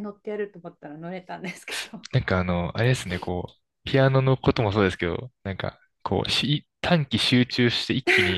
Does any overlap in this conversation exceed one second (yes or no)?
no